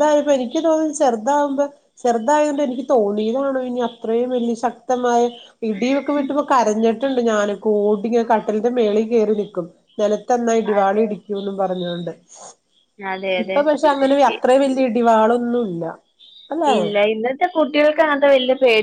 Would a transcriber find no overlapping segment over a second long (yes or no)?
yes